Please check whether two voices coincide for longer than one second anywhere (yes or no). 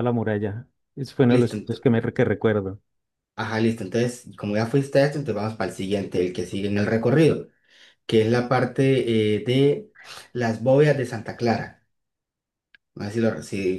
no